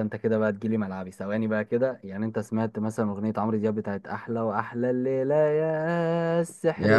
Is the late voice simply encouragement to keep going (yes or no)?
no